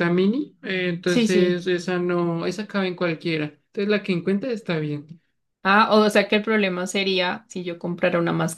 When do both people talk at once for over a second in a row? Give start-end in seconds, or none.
none